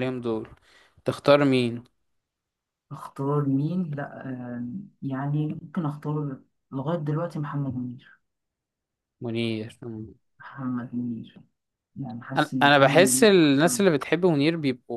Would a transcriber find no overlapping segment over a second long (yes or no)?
no